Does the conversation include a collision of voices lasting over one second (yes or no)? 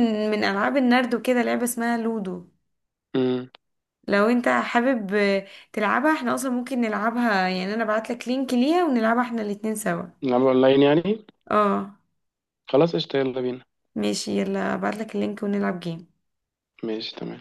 no